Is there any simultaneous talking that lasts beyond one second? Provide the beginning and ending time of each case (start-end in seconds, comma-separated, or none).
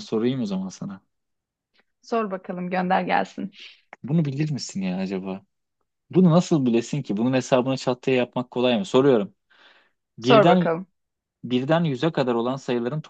none